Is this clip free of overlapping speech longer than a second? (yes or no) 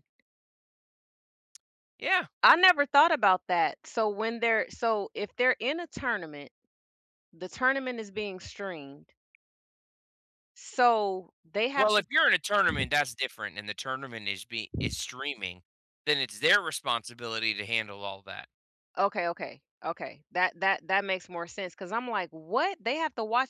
yes